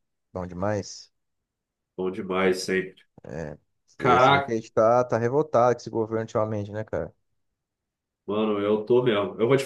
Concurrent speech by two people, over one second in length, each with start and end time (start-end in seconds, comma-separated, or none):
none